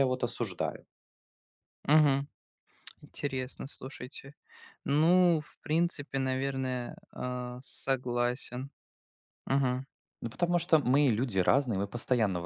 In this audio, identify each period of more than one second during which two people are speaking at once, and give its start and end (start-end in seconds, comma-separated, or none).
none